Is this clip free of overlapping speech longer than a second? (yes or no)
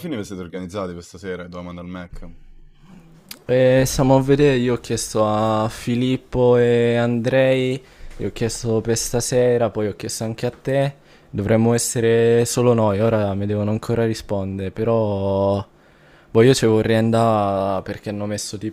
yes